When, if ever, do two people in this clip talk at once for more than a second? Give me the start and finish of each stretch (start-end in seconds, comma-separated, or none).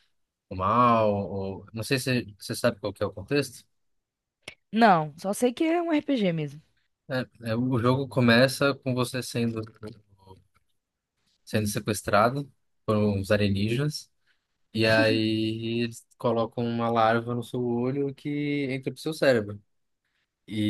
none